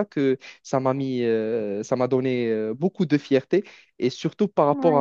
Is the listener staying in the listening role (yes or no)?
yes